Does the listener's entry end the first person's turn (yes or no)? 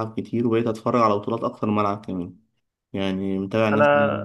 yes